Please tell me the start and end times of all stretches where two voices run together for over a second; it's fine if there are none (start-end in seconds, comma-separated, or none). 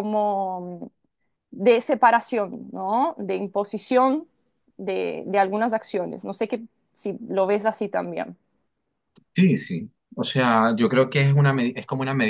none